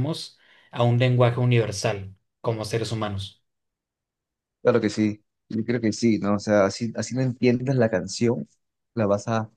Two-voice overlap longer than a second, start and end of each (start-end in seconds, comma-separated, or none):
none